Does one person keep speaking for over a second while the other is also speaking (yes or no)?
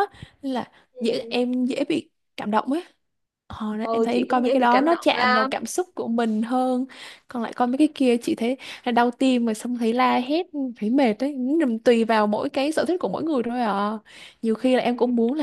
yes